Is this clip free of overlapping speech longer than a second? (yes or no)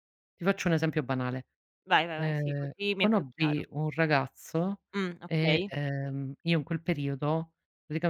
no